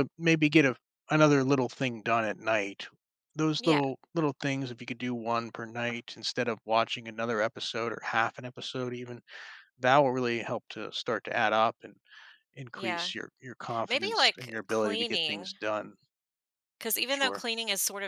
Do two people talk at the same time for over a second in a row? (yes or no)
yes